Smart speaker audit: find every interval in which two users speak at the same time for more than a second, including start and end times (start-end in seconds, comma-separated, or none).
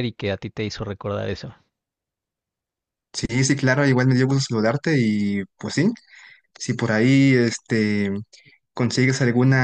none